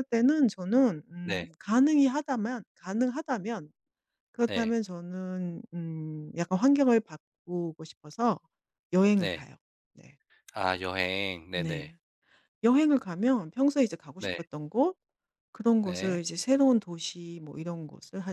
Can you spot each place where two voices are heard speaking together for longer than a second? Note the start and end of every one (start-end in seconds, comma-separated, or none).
none